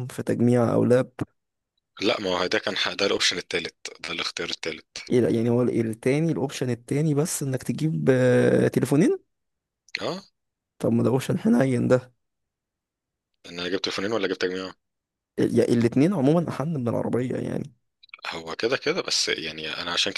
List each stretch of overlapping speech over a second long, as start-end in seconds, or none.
none